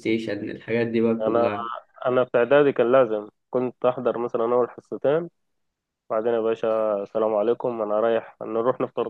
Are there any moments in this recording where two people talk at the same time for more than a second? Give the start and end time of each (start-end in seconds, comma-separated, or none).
none